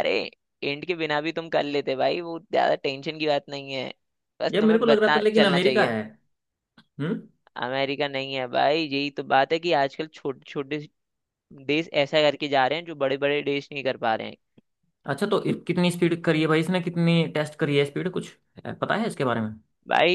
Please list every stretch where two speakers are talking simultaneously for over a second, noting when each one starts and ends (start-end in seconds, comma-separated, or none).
4.5-6.0